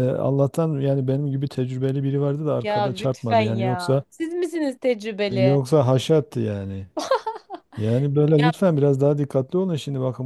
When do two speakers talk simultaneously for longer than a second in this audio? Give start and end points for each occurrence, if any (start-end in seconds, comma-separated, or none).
2.6-4.0